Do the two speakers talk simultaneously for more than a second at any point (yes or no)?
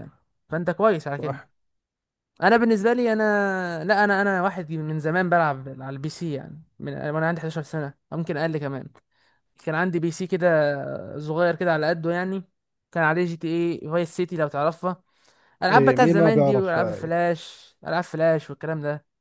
yes